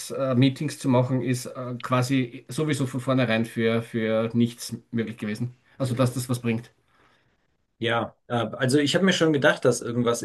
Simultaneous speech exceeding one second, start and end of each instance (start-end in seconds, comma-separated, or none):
none